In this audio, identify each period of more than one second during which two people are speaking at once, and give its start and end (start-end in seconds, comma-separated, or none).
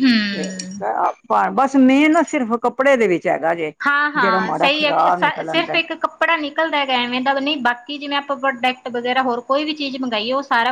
4.2-5.8